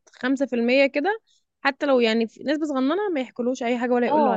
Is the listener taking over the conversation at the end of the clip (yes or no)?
yes